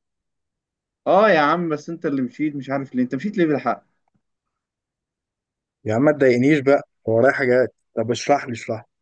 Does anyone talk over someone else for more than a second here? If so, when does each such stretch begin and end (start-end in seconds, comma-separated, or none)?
none